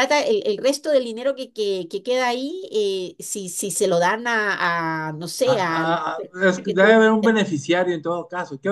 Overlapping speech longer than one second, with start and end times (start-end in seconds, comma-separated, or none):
5.5-7.0